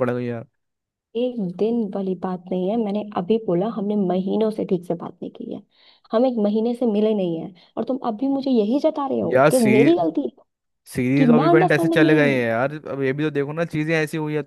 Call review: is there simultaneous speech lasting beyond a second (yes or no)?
yes